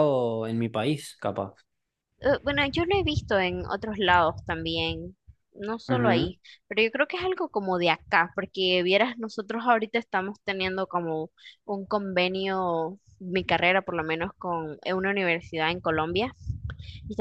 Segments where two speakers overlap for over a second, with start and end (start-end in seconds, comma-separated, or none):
none